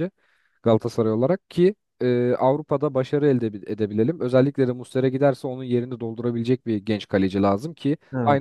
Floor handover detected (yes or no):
no